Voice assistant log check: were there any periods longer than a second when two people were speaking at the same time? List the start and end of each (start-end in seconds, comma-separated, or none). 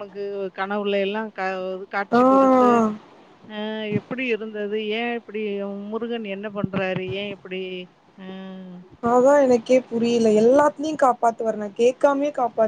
none